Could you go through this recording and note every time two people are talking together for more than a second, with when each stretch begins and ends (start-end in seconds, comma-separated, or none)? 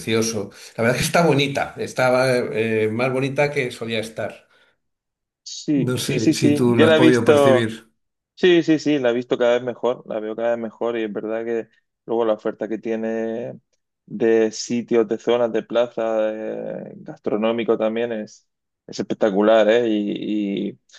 5.9-7.7